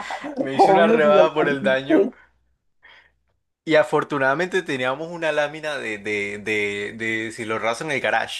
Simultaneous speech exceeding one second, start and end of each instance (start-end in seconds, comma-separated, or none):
0.5-2.1